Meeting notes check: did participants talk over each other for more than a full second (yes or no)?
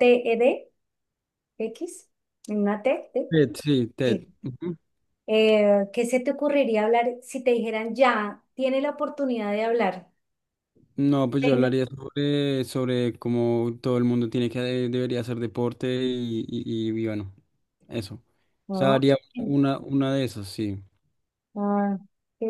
no